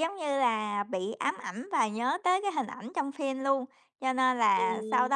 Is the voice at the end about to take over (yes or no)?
no